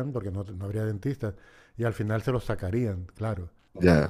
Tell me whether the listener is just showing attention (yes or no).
no